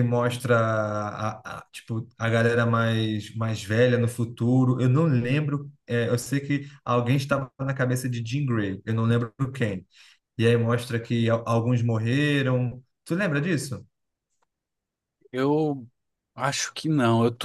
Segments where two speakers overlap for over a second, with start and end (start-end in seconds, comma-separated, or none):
none